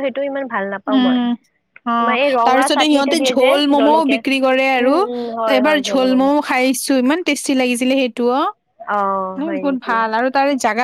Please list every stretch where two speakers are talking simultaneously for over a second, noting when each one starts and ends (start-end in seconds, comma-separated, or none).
2.0-4.2